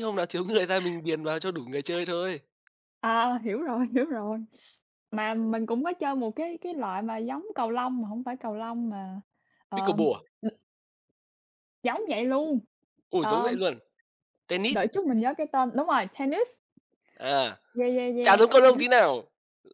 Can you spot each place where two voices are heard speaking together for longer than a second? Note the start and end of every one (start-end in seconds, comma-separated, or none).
none